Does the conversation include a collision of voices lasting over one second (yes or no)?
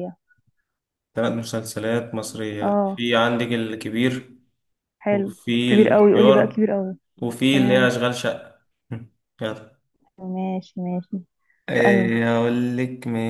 yes